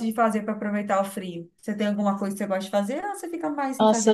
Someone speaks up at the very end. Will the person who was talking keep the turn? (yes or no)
no